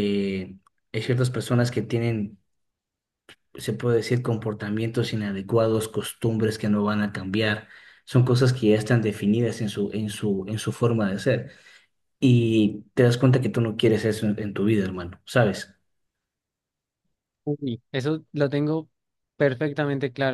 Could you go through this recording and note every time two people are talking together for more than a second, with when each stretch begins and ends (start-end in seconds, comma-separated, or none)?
none